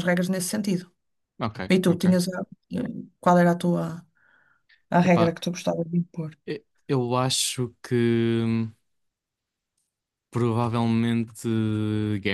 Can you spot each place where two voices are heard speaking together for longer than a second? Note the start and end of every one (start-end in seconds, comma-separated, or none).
none